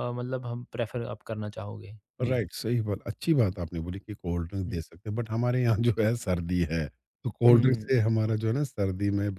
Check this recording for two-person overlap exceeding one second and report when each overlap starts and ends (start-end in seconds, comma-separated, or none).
none